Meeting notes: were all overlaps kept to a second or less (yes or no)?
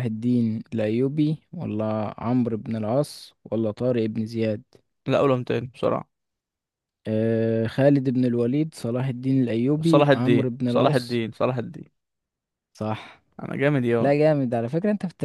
no